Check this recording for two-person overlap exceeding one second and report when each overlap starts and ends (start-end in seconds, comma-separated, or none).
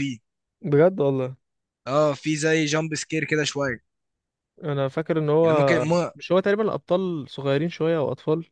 none